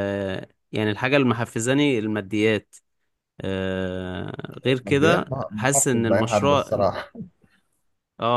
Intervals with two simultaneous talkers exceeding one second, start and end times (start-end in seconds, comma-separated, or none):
4.8-6.8